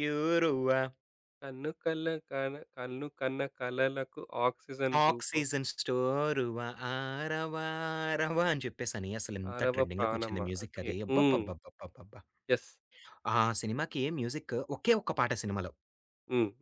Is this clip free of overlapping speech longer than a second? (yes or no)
no